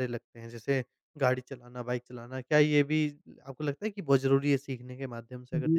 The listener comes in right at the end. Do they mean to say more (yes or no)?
yes